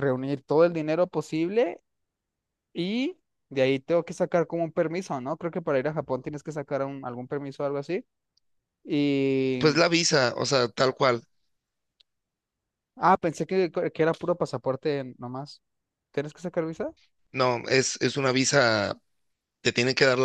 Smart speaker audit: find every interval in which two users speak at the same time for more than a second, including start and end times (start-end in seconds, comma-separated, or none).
none